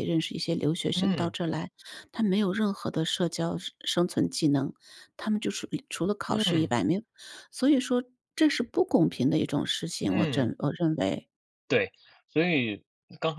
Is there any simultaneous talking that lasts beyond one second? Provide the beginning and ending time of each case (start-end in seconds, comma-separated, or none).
none